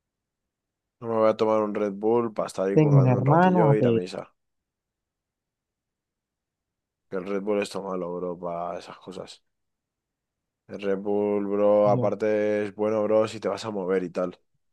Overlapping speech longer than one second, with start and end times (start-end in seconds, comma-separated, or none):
2.7-4.0